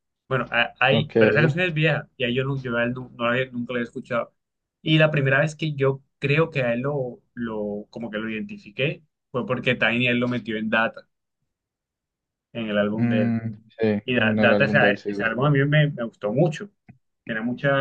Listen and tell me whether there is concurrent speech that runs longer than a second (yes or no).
yes